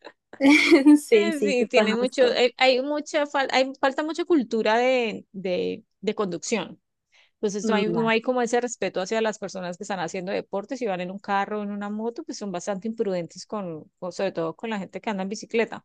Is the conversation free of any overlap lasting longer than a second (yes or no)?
no